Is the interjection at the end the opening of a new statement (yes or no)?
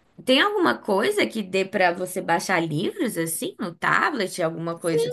yes